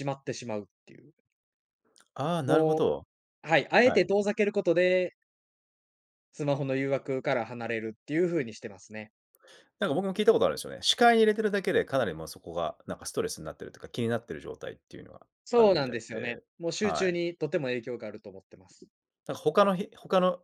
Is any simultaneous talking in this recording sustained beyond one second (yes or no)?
yes